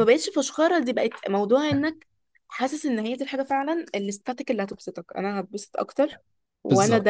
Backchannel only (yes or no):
yes